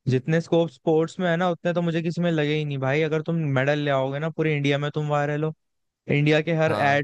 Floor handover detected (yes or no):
no